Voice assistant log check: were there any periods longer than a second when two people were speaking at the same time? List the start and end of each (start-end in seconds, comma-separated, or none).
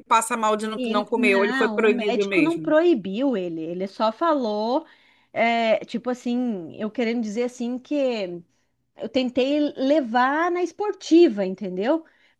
0.8-2.8